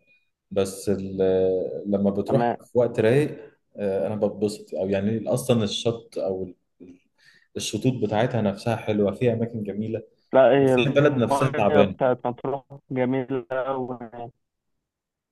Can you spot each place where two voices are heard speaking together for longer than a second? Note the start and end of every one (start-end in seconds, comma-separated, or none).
10.6-11.9